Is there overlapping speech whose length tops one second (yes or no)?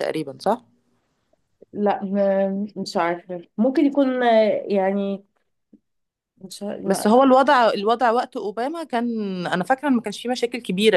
no